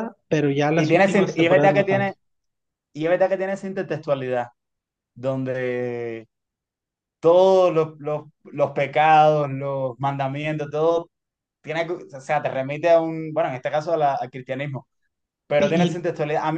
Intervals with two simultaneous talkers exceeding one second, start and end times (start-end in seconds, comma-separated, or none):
0.8-2.1